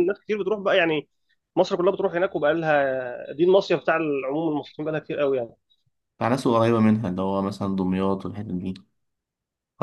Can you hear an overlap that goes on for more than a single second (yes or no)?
no